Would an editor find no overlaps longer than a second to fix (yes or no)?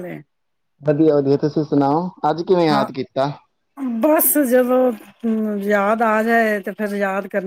yes